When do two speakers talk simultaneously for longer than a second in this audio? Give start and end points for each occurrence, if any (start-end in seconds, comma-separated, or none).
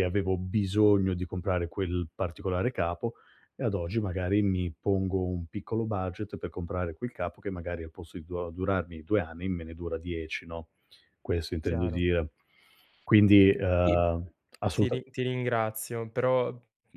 none